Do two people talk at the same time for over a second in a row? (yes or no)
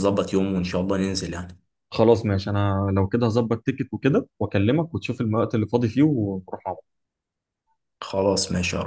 no